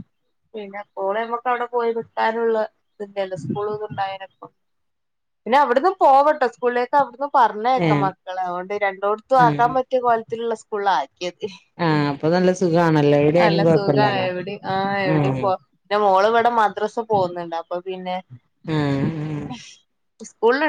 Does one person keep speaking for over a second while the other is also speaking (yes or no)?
no